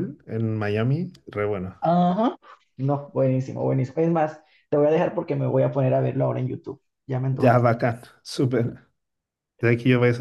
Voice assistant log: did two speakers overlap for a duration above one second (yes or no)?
no